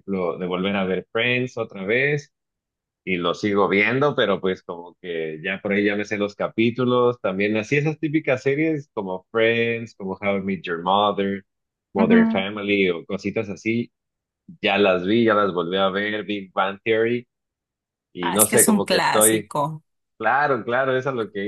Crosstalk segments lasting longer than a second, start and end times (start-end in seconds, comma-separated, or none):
18.2-19.5